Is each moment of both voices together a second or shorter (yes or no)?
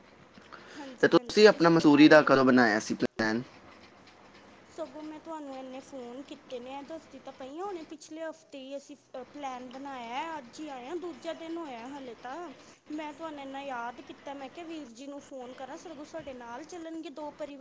no